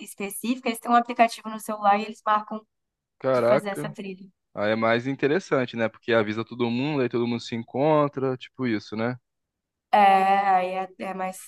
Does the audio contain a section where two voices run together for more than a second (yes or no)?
no